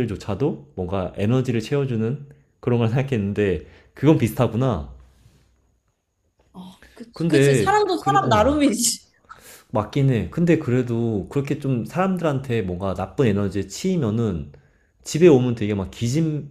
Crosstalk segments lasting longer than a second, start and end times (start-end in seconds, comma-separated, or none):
7.1-8.6